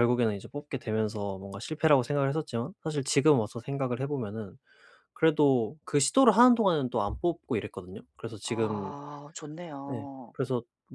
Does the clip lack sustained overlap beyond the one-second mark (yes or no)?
yes